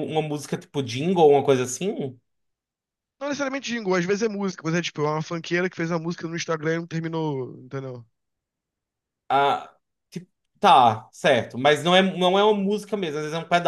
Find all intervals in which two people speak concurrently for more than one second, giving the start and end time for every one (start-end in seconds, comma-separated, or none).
none